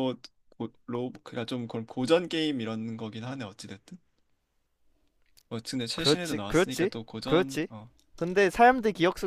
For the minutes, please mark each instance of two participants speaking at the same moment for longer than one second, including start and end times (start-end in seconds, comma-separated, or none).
6.0-7.7